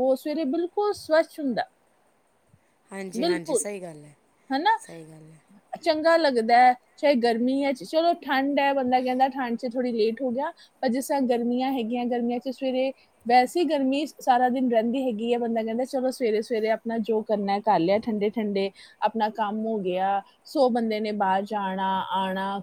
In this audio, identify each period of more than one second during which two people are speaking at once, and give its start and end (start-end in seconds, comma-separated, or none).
none